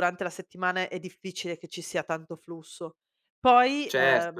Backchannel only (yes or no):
no